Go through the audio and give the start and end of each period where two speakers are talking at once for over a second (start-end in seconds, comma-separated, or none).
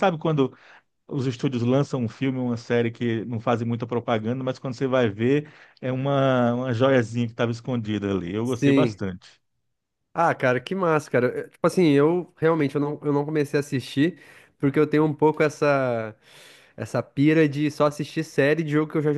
none